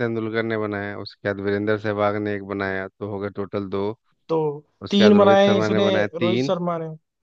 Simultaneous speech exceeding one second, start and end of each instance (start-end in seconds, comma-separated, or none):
4.9-6.5